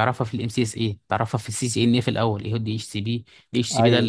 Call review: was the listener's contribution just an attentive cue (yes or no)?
yes